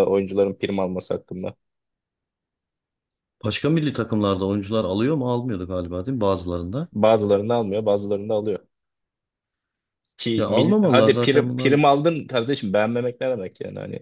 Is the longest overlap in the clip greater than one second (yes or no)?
yes